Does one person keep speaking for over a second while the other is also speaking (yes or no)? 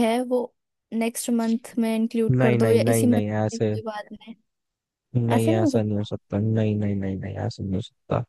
yes